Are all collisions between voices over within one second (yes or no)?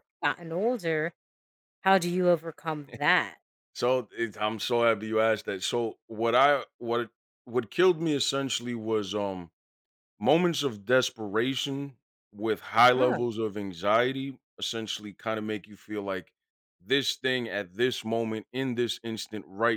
yes